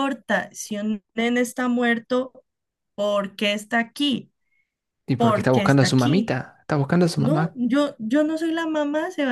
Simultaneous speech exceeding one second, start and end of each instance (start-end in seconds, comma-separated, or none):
5.2-6.4